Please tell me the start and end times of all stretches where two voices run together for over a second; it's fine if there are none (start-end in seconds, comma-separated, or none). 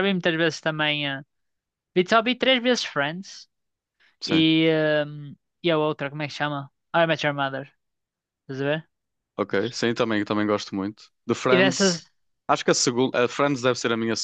none